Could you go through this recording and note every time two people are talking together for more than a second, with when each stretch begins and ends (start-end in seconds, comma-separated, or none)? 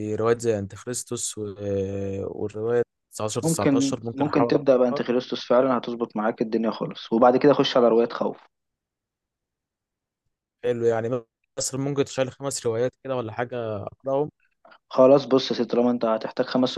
3.4-5.0